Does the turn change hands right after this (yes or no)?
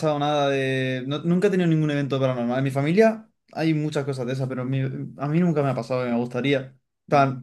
no